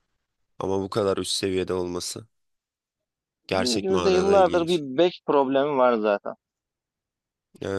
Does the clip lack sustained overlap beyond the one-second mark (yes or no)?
no